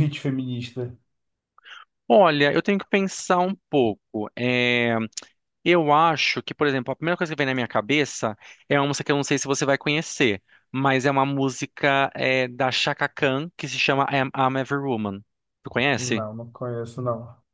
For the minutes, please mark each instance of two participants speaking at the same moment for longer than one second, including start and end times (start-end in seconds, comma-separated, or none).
none